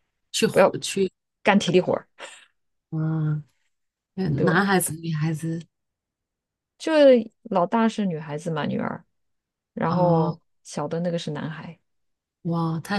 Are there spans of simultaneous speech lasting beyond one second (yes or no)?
no